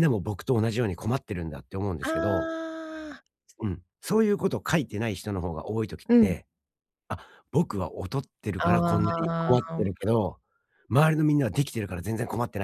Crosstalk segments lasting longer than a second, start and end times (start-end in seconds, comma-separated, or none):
8.6-9.9